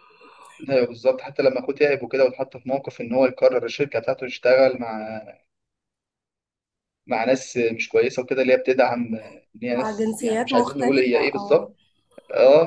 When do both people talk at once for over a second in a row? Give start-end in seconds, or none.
9.7-11.7